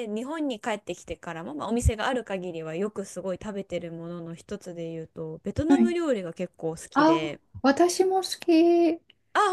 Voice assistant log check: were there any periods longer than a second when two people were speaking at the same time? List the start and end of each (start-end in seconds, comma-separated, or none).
none